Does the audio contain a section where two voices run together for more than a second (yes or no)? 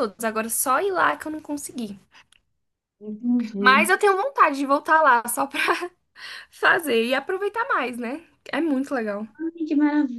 no